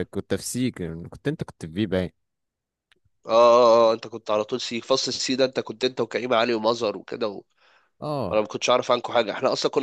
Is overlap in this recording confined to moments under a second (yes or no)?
yes